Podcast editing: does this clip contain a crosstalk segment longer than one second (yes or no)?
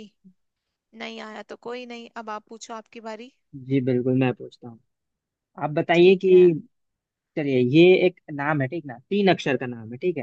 no